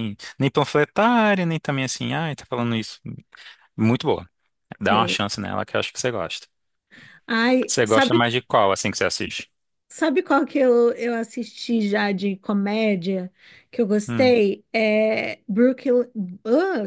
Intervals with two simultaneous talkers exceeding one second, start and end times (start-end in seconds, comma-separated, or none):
none